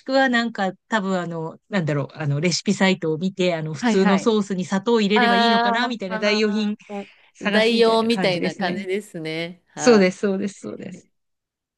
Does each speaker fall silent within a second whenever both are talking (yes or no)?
no